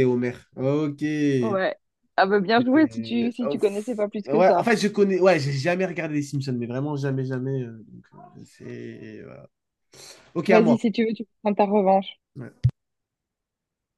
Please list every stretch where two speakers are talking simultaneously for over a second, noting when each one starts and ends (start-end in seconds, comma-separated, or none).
2.6-4.7